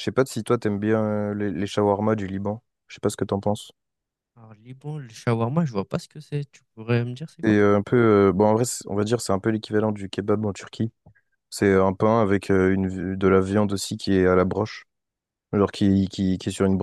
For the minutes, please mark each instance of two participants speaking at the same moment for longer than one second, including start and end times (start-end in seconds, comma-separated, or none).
none